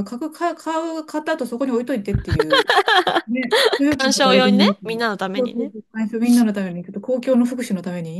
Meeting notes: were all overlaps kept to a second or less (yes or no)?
no